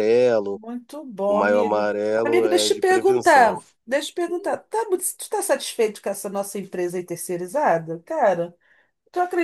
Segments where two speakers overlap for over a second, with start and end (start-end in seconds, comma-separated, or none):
1.3-3.6